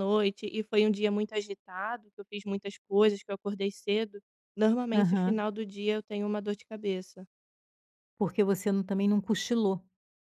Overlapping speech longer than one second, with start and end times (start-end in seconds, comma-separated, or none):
none